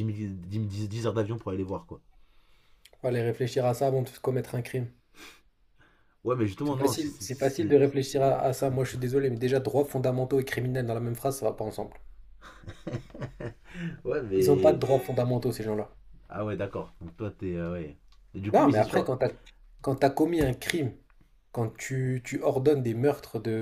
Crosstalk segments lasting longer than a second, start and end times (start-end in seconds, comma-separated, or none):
6.6-7.8